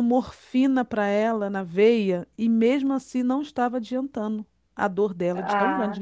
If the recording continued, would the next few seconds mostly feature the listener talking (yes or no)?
yes